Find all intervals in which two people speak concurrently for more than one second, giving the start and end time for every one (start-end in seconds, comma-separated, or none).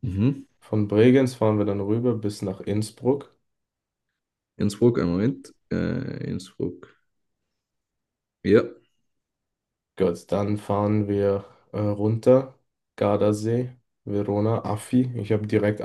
none